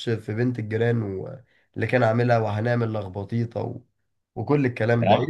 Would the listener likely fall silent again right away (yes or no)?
no